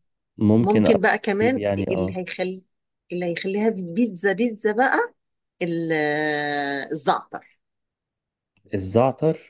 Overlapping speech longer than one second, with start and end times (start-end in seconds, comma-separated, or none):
0.6-2.2